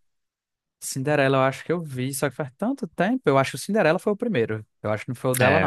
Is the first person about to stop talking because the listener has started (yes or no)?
yes